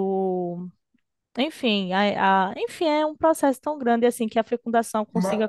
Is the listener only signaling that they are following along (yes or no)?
yes